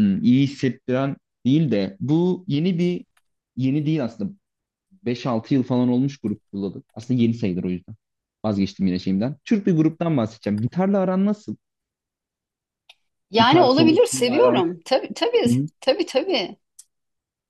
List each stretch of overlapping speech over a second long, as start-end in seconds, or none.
13.4-14.7